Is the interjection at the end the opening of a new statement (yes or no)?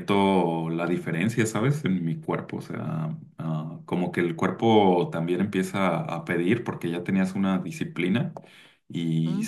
no